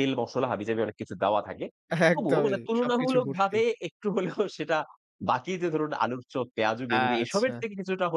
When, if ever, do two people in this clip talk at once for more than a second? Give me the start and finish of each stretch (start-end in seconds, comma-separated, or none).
2.1-3.6